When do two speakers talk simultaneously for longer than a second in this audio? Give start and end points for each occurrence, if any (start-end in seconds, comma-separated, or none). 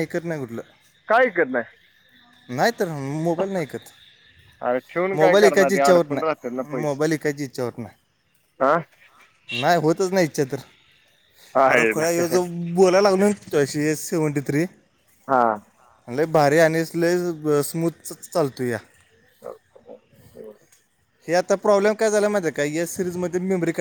5.2-7.1